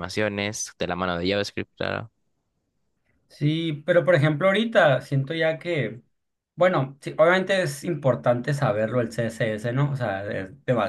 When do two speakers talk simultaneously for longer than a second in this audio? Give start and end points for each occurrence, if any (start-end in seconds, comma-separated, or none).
none